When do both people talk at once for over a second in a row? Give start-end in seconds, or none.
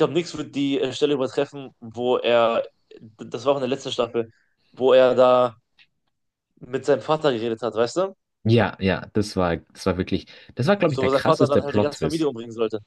10.9-12.3